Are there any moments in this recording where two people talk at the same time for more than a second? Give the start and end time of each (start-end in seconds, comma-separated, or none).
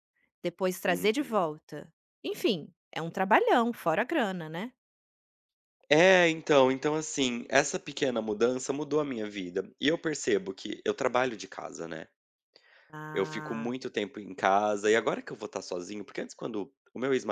none